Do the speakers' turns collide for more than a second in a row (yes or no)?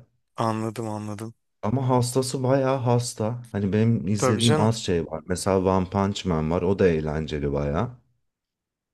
no